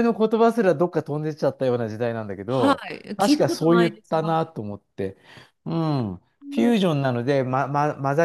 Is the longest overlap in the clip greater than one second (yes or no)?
yes